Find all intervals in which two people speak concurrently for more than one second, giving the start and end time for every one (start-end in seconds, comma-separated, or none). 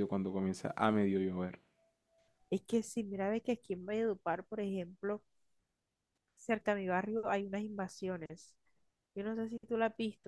none